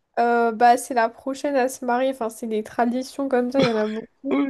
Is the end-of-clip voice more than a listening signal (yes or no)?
yes